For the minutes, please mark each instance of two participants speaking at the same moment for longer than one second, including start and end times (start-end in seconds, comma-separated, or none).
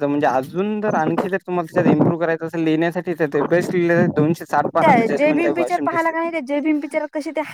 4.8-6.3